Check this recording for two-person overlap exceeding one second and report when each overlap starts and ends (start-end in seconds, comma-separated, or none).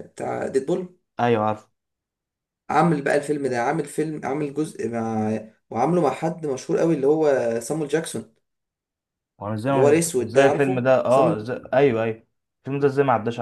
9.7-11.4